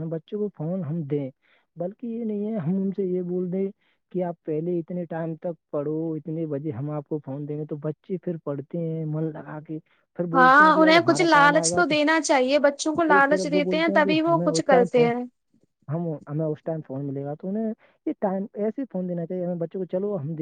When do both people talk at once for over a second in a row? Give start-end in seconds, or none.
10.3-11.9, 13.1-15.1